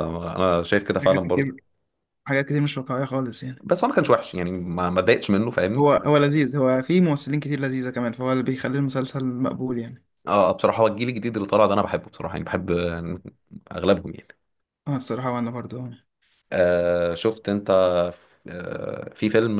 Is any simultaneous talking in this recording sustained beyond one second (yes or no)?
no